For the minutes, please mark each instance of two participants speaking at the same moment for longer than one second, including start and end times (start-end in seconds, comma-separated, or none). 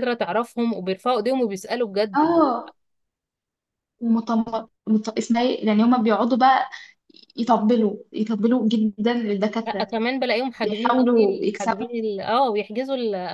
10.6-11.8